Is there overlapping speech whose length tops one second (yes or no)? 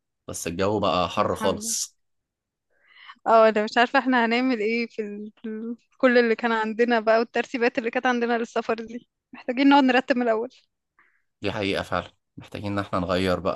no